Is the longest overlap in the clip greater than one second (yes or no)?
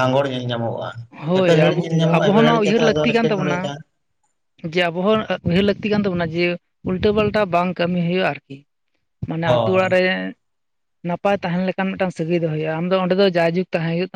yes